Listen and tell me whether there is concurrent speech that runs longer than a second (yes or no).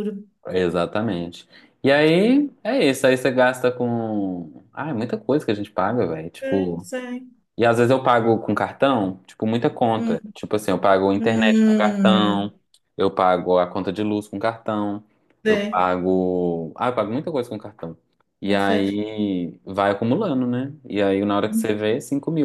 yes